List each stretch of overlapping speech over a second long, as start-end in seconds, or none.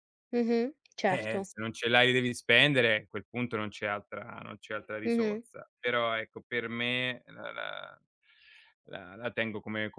none